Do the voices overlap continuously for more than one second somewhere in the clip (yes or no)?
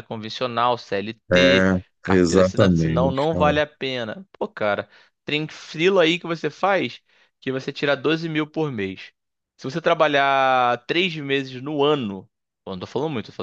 yes